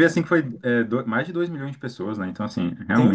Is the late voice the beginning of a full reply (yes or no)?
yes